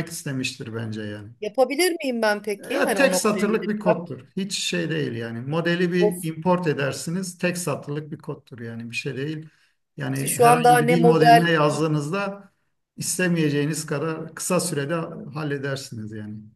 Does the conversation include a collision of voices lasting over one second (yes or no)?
yes